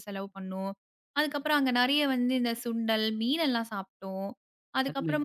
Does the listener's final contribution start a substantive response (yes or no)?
no